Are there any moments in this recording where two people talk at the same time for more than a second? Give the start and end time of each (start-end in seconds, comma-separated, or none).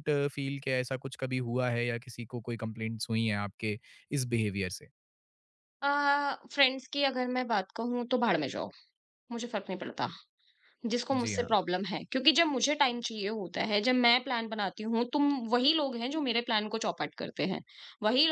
none